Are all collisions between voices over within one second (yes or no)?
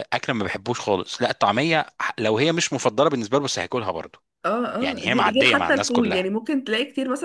no